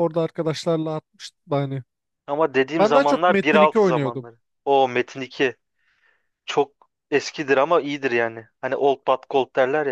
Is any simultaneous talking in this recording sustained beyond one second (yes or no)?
yes